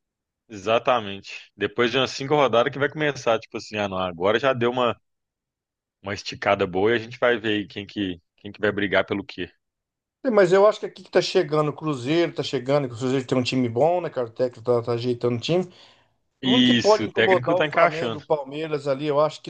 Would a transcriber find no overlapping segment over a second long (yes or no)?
no